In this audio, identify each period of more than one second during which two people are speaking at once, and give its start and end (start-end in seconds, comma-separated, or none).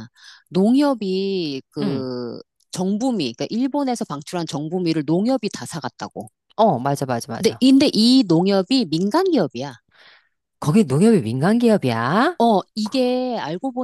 none